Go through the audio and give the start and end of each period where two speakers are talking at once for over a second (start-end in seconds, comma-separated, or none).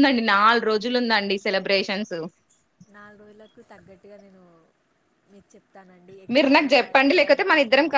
none